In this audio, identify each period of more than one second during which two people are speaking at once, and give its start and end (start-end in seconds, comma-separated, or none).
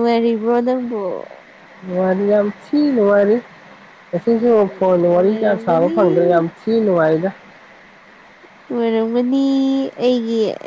4.3-6.0